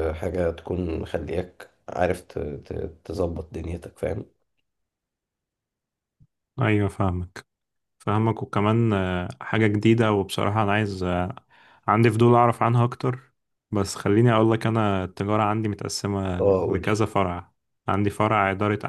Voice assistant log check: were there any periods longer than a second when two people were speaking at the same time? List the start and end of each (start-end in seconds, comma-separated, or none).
none